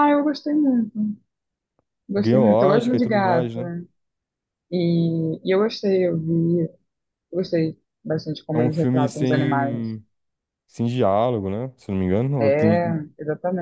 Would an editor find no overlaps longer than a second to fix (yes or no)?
no